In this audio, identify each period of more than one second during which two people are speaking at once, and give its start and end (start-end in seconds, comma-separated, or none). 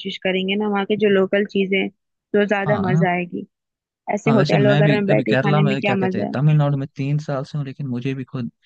4.2-6.4